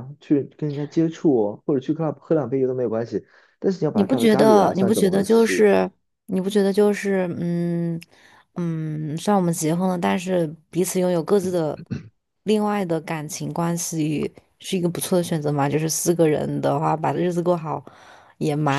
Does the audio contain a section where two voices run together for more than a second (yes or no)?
yes